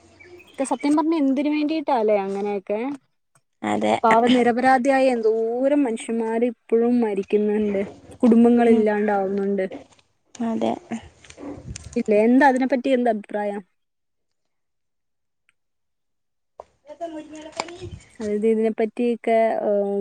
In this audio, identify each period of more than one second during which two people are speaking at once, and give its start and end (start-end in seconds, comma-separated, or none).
none